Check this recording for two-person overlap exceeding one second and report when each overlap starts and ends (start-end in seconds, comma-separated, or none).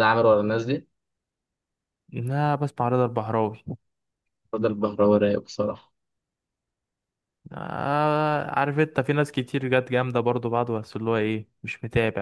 none